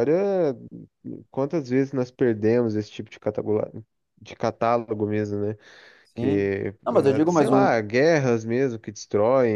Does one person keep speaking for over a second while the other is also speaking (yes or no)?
yes